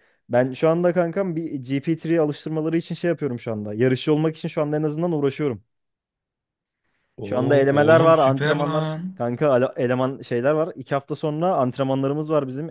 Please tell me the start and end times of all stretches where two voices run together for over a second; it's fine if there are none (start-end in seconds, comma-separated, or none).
7.2-9.2